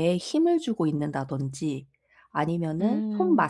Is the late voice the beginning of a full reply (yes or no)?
no